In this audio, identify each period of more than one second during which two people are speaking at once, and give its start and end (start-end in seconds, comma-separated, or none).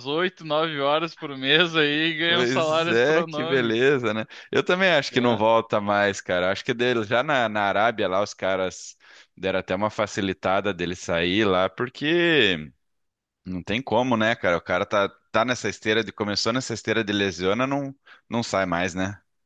2.2-3.8